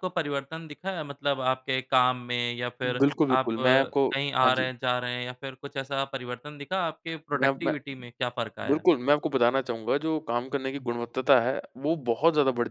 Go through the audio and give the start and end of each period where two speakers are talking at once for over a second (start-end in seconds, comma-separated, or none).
2.8-4.7